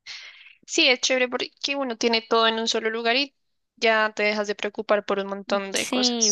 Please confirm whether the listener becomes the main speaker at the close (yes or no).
yes